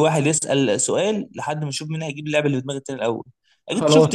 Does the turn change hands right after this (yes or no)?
no